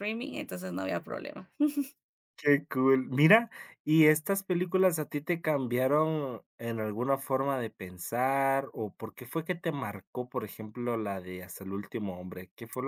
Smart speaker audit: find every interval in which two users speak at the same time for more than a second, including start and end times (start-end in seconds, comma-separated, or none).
none